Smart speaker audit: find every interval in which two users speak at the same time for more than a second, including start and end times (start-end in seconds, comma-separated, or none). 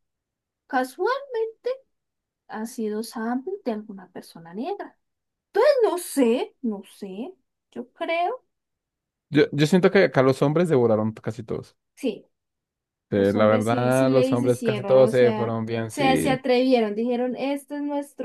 13.1-16.4